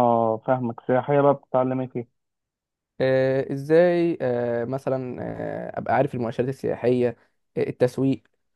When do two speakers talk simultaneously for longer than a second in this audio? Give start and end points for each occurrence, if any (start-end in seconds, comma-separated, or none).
none